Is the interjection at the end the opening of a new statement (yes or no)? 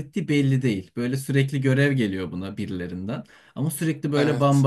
no